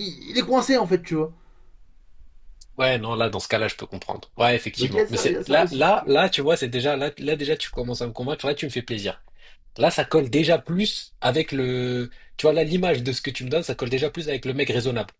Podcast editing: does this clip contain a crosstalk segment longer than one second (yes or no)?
yes